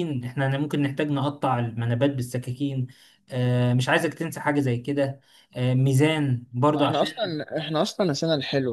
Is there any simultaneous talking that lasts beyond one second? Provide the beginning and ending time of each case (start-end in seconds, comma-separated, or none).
none